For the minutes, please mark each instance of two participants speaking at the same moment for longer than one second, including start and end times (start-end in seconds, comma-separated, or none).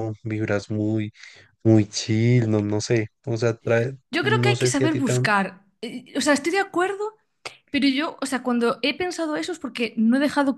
4.1-5.3